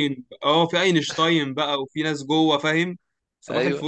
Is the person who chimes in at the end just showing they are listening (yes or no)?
no